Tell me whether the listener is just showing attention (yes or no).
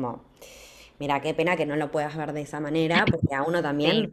yes